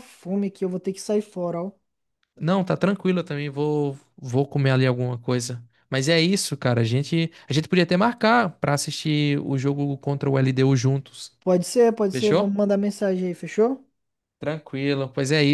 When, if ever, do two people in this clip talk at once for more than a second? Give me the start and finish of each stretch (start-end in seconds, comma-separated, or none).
none